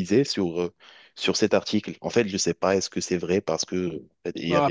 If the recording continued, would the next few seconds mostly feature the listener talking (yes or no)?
yes